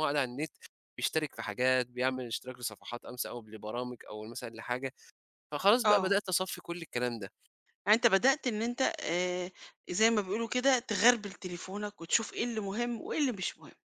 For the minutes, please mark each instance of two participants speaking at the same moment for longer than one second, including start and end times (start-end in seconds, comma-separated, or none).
none